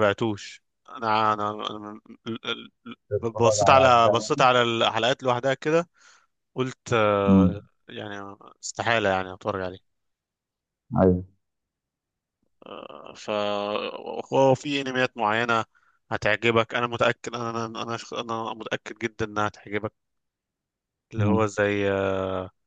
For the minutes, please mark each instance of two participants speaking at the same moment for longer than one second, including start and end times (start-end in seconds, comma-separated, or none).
3.2-4.5